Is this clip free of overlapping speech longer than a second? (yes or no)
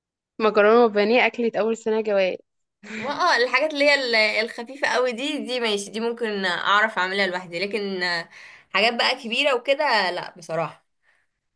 yes